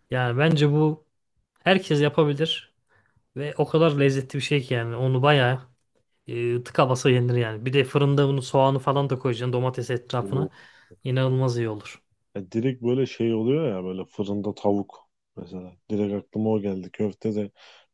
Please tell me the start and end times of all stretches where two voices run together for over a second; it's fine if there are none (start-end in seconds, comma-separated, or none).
none